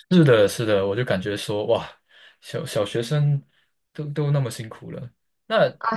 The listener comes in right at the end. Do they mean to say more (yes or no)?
yes